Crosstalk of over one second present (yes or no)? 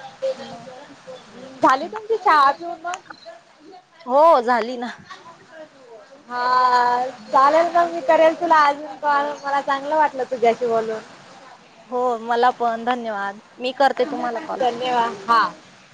no